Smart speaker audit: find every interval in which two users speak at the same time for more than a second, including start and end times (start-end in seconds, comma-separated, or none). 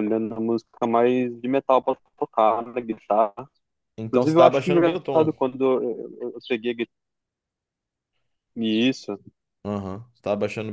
4.1-5.3